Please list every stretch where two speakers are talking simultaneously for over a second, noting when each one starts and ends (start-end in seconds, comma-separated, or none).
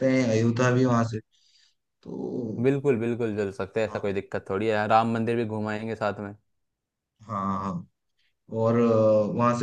none